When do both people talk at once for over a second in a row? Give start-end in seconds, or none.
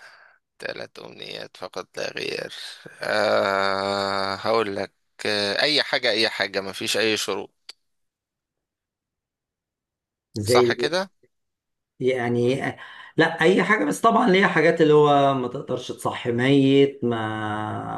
none